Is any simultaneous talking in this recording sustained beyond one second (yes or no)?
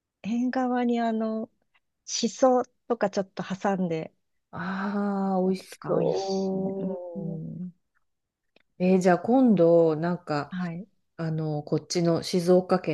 yes